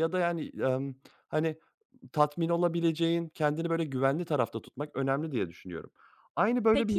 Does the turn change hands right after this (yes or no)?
yes